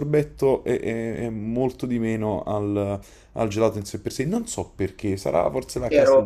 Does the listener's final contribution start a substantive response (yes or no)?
yes